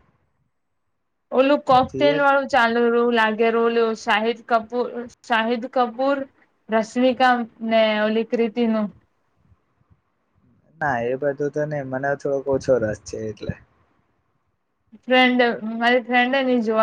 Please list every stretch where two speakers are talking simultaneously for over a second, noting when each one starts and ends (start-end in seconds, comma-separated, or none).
none